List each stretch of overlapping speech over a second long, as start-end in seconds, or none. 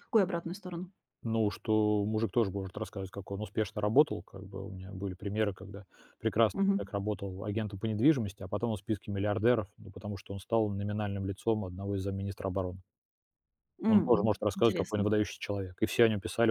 13.9-15.1